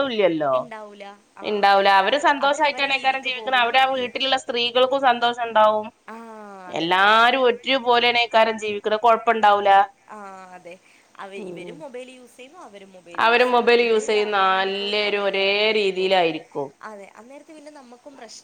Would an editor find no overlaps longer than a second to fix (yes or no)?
no